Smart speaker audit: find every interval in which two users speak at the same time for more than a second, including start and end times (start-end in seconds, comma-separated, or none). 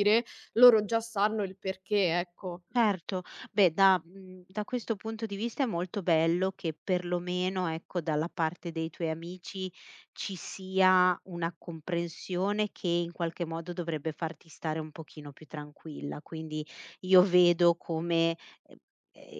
none